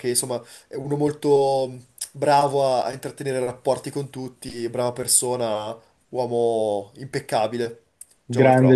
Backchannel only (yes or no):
no